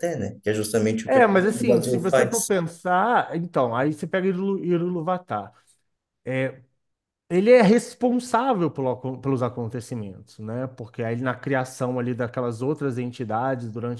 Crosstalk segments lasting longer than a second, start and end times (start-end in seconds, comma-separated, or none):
1.1-2.5